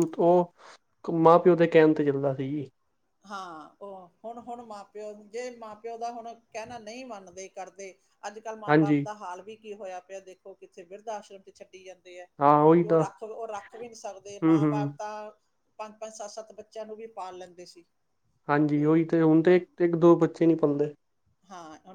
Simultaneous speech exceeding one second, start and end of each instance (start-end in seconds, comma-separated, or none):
none